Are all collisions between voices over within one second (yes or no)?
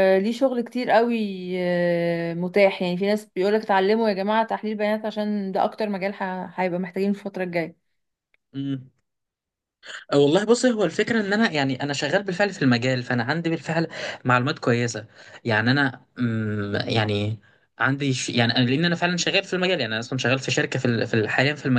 yes